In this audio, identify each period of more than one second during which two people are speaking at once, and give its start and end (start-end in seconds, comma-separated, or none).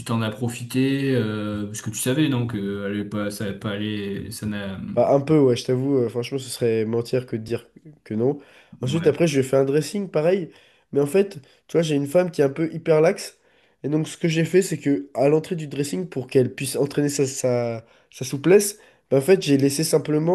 none